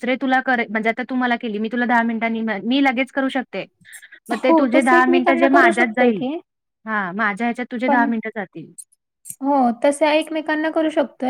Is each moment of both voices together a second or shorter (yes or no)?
no